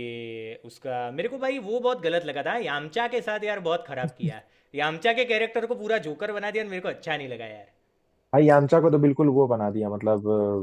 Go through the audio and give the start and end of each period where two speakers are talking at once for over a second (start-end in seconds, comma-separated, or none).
none